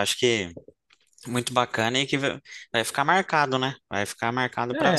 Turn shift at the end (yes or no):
yes